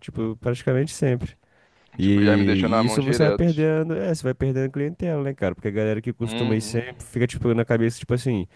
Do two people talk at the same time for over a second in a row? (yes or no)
yes